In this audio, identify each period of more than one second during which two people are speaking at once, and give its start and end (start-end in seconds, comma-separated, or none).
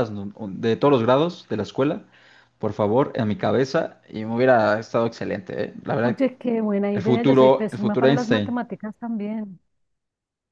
6.9-8.6